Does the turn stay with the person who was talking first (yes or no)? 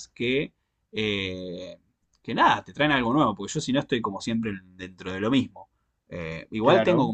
yes